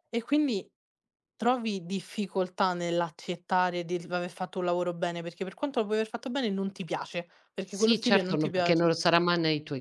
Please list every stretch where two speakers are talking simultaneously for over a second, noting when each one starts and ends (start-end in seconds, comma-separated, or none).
7.6-8.9